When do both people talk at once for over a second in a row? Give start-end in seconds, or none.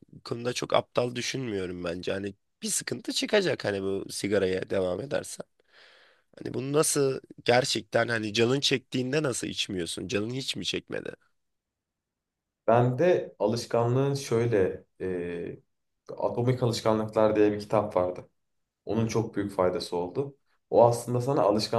none